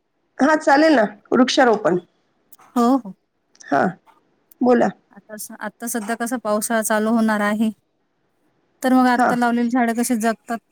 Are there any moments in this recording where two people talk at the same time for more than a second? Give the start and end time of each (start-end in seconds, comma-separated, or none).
none